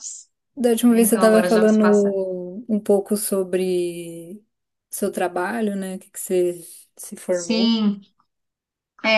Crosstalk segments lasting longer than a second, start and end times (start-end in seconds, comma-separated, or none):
0.9-2.1